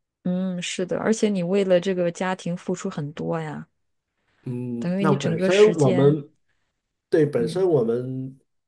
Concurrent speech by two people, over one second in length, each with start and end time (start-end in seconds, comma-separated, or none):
4.8-6.2